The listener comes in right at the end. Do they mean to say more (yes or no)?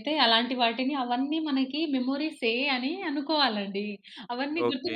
no